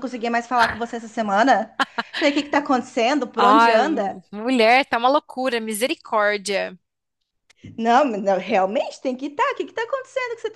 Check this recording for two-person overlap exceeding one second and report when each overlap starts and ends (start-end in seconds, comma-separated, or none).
none